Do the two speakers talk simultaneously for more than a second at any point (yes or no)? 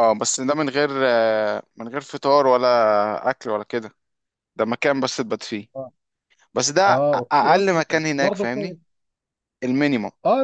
yes